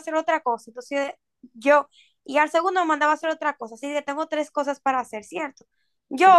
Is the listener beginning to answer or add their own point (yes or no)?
no